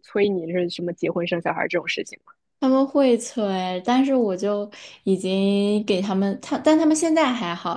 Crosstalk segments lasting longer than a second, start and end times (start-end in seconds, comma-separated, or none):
none